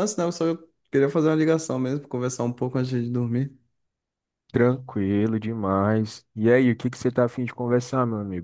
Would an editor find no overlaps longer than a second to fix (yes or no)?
yes